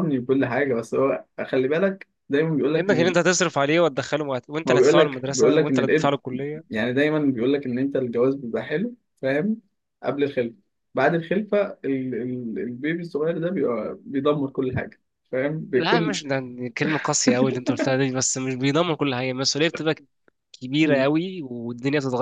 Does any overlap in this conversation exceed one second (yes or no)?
yes